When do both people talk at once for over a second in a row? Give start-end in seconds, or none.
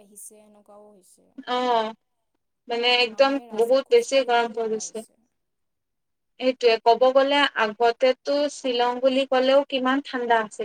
2.9-5.0